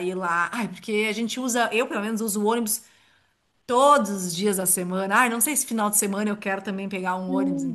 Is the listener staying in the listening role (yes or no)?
no